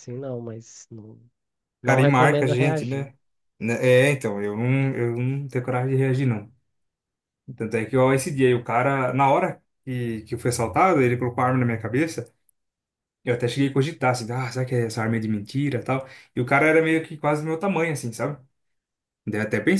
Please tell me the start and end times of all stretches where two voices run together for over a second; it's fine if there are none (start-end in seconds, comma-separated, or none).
1.8-3.1